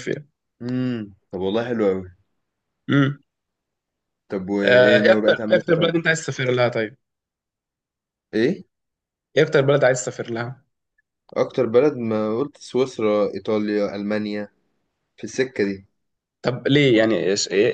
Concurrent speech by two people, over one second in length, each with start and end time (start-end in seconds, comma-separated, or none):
4.6-6.1